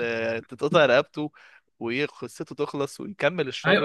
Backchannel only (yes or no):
no